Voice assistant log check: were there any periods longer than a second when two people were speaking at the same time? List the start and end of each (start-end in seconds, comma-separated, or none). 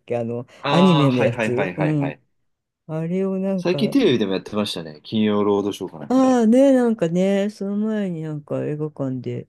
0.6-2.2